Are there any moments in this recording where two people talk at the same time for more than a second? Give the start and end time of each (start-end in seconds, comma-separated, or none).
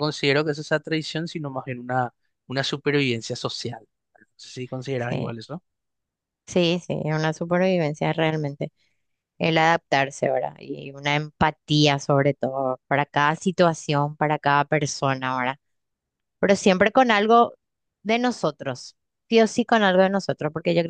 none